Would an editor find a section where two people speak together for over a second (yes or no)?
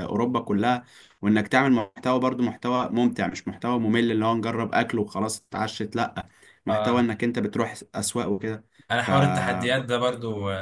no